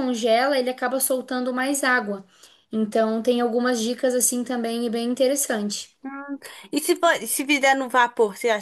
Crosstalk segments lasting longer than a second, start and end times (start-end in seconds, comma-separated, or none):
none